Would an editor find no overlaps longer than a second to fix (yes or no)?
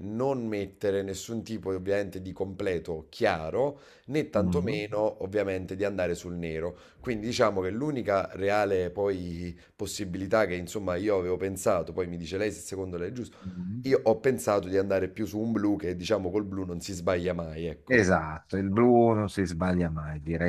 yes